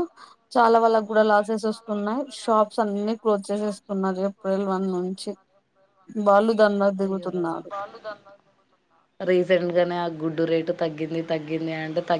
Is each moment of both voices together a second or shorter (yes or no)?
no